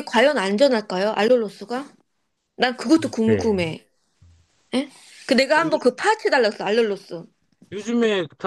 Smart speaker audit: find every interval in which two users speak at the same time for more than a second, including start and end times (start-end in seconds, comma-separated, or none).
none